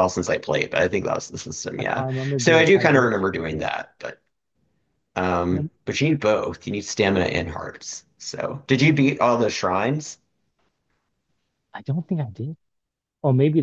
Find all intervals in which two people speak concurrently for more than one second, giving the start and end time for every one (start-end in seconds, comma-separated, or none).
1.8-3.7